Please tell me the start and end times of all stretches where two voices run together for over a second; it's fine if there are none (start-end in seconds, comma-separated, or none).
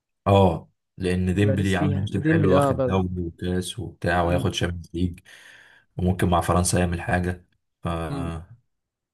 1.3-3.0